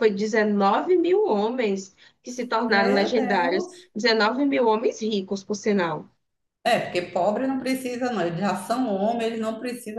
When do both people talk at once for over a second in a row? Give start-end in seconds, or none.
2.7-3.9